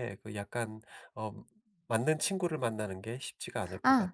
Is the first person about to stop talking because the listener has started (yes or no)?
yes